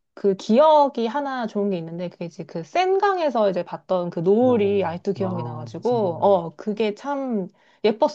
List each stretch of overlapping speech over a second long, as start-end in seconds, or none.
4.4-6.2